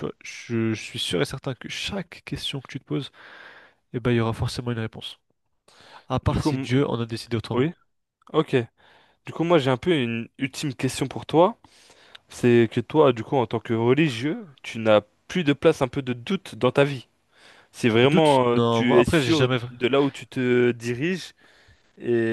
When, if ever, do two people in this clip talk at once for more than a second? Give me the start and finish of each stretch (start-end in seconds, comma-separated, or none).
18.0-19.6